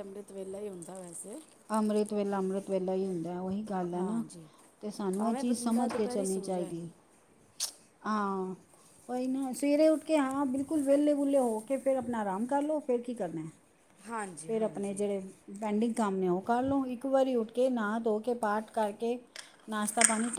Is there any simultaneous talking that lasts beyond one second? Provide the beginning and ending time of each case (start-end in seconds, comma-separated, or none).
5.2-6.7